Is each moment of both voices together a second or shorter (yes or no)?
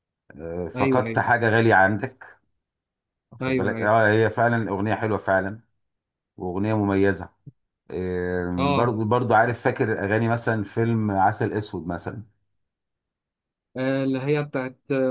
yes